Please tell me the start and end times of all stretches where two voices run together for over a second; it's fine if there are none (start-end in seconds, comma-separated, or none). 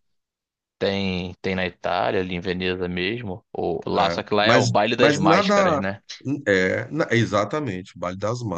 3.9-5.8